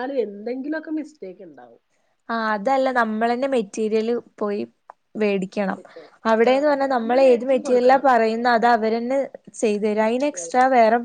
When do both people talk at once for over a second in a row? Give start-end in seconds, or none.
6.5-8.1